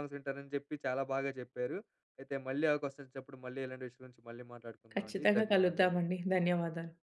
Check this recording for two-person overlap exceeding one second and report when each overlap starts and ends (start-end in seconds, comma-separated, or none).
4.9-6.2